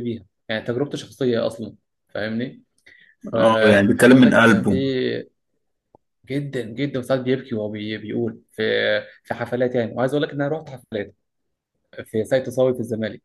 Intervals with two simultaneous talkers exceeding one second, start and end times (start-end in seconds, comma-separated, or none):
3.3-4.7